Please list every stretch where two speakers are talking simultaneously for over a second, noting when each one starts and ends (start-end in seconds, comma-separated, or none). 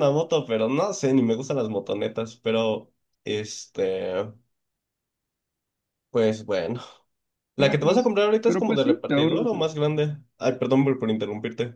7.5-9.7